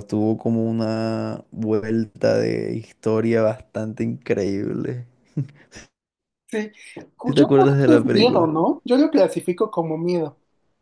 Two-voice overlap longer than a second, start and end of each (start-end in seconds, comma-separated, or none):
7.2-8.5